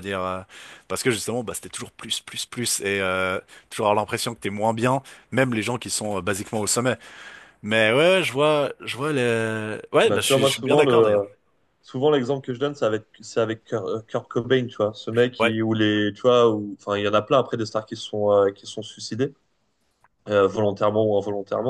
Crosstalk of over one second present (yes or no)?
yes